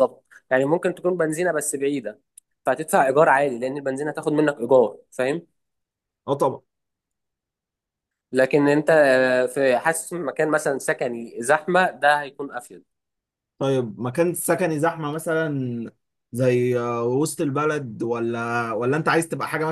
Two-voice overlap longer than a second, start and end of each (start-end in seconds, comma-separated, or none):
none